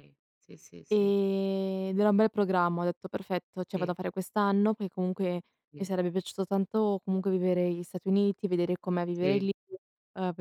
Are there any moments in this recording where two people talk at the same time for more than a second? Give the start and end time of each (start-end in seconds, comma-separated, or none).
none